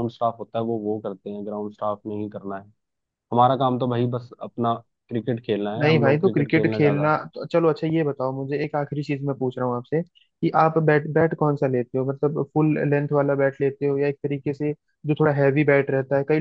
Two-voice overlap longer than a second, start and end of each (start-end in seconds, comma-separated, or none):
5.8-7.1